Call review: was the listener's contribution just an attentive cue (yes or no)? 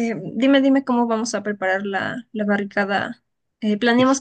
yes